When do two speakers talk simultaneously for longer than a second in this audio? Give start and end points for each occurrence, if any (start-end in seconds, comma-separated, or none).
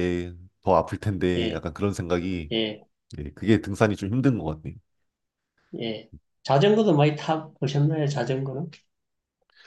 none